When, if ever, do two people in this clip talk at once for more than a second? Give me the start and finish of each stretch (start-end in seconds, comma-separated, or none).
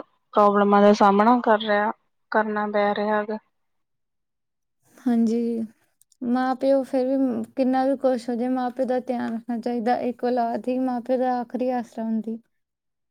none